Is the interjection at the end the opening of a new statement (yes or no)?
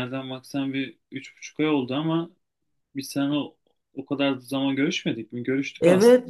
yes